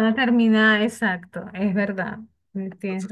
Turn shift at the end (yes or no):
yes